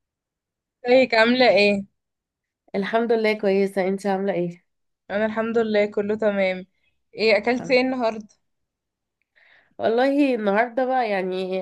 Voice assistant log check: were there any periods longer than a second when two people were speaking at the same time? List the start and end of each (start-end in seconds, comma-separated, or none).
none